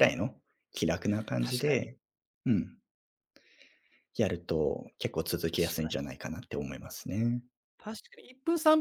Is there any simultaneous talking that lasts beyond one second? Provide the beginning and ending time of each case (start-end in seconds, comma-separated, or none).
none